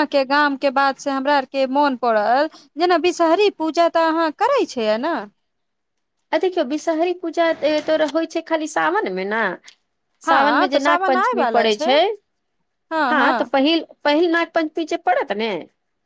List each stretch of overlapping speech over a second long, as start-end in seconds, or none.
10.3-11.9